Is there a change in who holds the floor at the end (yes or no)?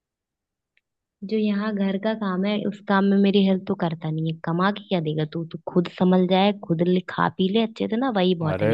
yes